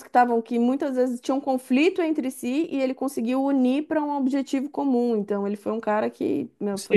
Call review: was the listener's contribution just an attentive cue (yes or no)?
no